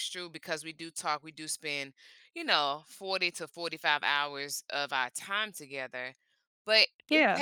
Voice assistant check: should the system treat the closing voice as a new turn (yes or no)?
no